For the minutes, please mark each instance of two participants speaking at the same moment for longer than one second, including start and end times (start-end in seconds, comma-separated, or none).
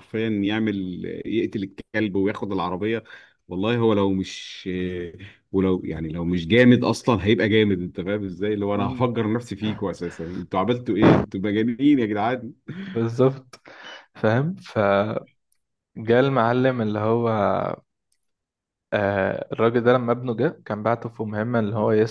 none